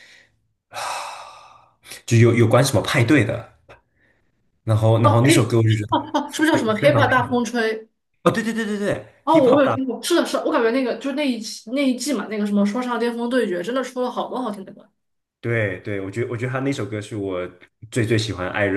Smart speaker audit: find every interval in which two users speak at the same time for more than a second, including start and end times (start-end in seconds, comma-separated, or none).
5.0-7.0